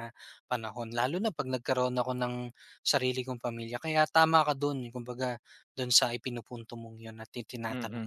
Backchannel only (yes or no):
no